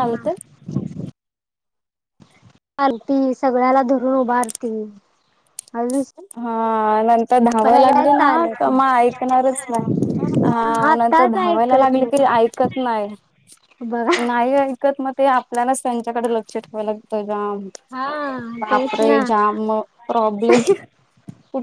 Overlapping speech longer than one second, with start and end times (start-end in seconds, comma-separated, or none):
10.5-12.4